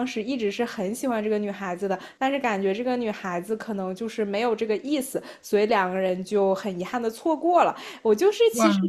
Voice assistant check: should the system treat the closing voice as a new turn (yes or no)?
no